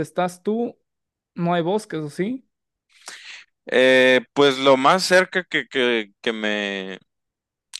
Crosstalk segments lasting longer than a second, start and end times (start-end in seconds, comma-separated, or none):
none